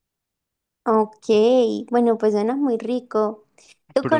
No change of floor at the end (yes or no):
yes